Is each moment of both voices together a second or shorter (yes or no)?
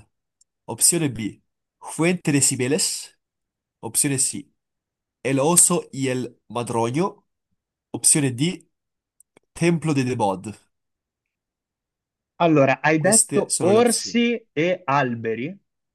no